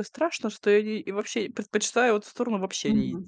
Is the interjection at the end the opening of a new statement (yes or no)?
yes